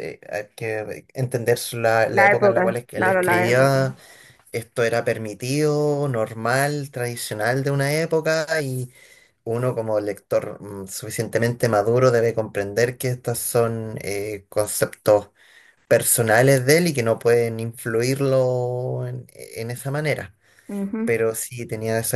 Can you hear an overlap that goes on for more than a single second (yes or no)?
yes